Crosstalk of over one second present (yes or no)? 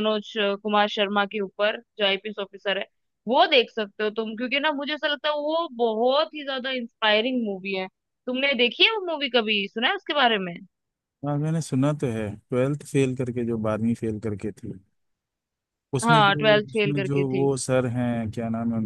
yes